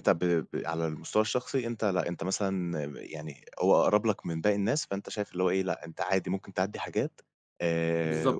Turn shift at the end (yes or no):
yes